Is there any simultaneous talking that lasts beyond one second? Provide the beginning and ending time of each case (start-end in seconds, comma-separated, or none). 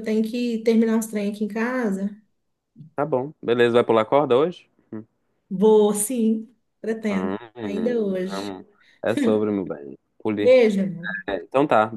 7.1-8.5